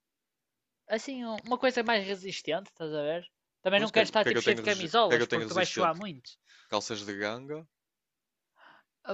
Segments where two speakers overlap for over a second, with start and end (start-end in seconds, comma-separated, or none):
3.7-6.0